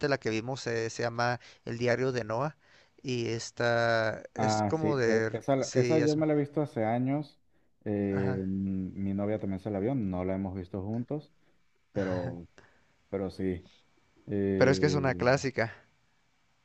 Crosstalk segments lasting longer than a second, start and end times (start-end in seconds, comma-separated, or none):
4.4-6.2